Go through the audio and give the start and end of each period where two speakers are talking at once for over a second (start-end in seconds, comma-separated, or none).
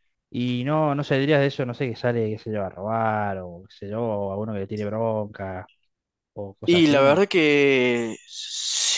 none